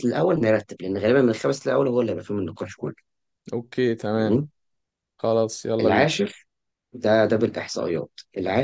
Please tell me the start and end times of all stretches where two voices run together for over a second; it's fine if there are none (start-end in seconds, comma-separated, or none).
none